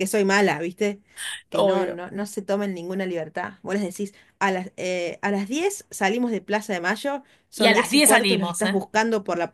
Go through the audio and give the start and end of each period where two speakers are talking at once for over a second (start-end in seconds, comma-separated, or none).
7.5-8.8